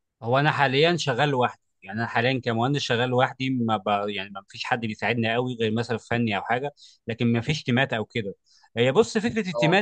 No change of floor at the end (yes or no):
yes